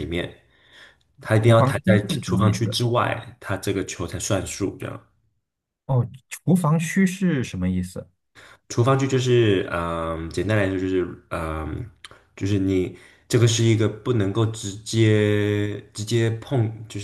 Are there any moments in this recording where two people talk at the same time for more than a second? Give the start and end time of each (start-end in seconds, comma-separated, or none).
1.4-2.8